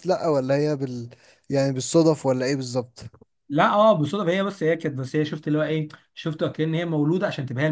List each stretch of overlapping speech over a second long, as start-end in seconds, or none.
none